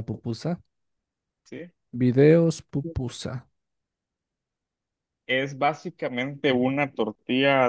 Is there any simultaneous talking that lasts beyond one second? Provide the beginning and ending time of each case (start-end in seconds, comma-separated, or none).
none